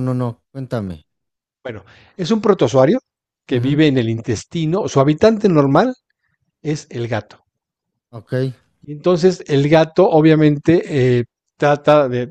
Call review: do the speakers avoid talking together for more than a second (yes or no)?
yes